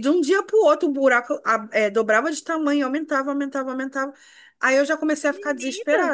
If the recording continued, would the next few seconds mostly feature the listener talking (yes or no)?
no